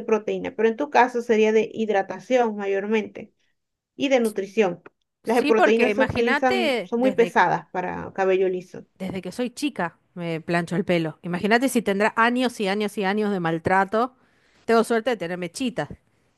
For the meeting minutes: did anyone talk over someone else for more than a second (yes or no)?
yes